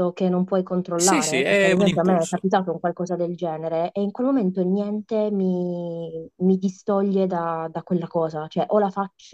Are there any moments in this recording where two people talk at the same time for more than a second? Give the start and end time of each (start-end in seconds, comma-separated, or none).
1.0-2.5